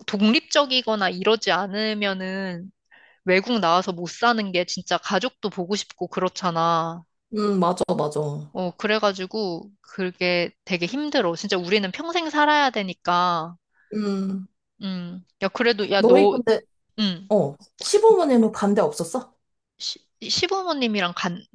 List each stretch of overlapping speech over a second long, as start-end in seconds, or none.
none